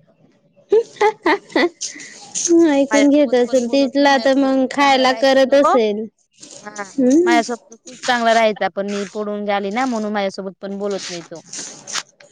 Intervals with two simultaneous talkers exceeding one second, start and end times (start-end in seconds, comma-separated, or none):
2.9-5.4